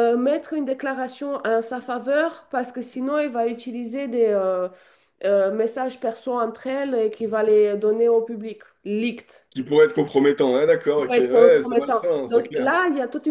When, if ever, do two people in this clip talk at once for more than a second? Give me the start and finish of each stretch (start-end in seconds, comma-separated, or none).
11.0-12.7